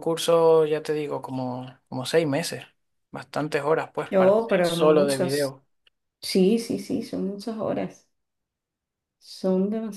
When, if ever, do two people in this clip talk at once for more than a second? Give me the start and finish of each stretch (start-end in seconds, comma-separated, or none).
4.1-5.6